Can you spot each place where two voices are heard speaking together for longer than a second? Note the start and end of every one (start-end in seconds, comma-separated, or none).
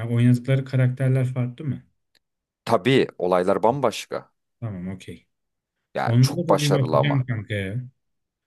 6.0-7.2